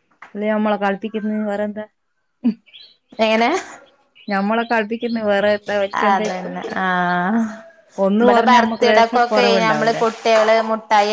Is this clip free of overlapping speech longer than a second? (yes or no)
no